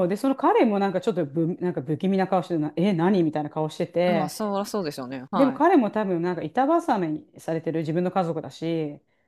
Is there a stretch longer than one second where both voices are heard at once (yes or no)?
no